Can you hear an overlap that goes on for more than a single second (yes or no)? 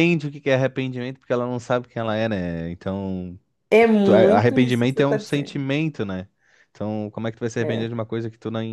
yes